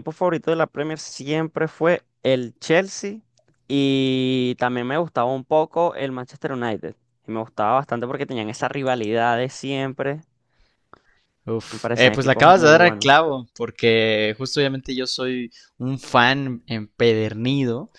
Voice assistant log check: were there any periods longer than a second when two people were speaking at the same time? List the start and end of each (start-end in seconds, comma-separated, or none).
11.7-13.1